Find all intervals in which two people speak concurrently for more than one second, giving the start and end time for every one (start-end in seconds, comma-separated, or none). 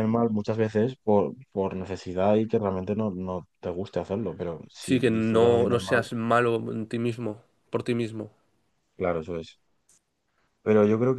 4.8-6.0